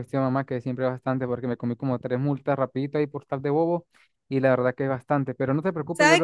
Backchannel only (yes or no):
no